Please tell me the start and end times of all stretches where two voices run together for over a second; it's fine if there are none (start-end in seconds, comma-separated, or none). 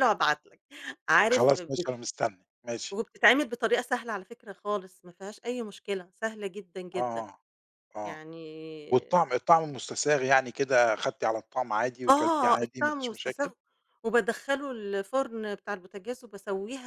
12.1-13.5